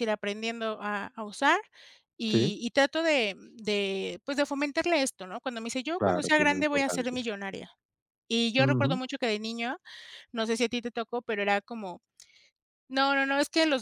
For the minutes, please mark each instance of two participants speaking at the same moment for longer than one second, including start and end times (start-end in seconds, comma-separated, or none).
6.0-7.2